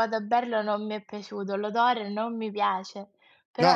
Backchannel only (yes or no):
no